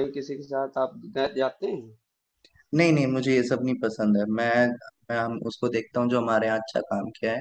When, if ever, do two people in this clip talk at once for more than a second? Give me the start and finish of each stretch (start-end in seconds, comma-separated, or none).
none